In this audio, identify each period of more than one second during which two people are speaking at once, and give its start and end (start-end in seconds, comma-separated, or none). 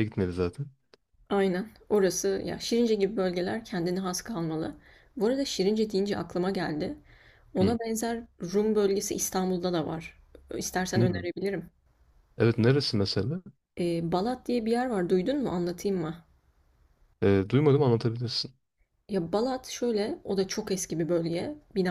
none